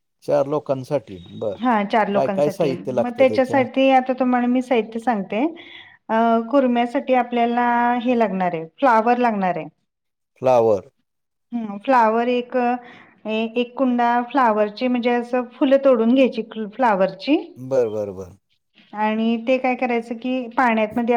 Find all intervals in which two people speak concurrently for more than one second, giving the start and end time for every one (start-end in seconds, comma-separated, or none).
2.1-3.6